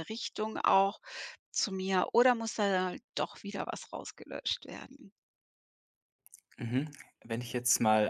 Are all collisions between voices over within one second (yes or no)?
yes